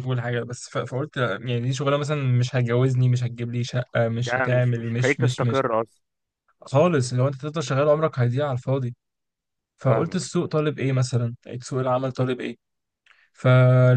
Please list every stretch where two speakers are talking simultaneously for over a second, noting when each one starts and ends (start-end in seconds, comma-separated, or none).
4.2-5.7